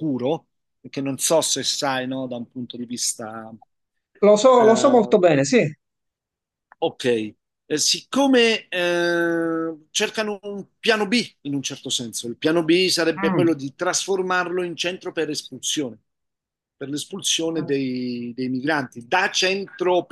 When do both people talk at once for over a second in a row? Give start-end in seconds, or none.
none